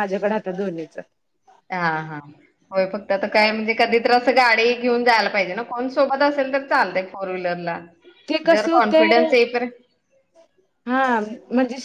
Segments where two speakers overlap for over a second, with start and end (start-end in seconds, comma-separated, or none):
none